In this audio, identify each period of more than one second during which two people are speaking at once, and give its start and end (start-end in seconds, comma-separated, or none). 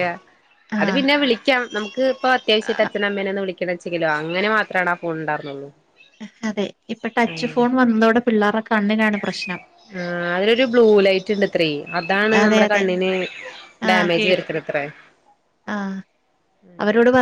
none